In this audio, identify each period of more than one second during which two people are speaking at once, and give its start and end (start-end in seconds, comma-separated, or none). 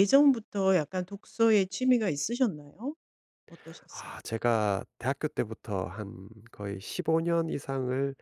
none